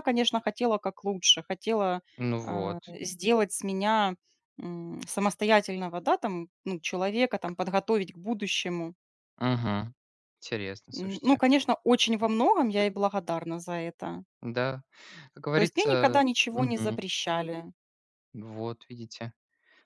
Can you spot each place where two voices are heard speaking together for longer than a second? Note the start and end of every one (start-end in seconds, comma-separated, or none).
15.5-17.0